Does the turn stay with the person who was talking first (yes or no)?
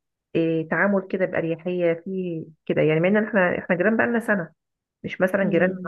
yes